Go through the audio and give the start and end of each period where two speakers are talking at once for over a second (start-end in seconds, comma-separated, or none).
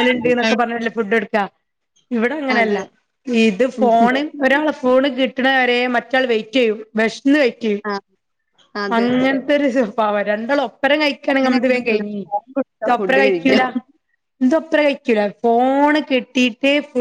11.3-13.6